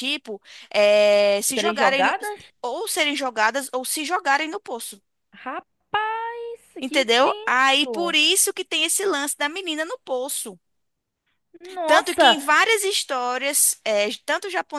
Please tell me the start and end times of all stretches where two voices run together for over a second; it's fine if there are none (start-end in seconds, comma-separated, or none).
6.8-8.1